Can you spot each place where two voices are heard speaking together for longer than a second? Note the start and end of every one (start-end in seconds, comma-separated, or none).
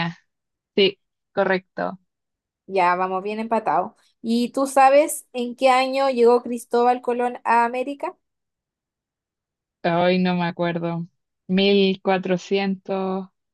none